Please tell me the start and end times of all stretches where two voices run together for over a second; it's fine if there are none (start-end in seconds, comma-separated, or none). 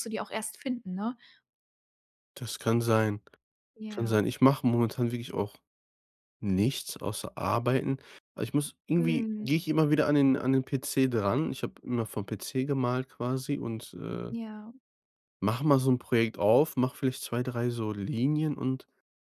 none